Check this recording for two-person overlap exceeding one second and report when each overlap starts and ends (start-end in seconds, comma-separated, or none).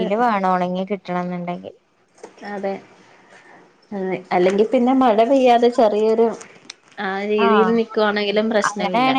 none